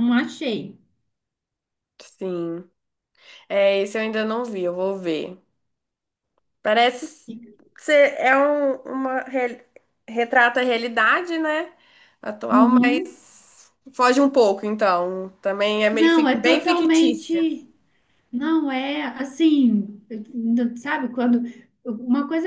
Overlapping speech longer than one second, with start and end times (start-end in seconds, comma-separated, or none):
15.9-17.4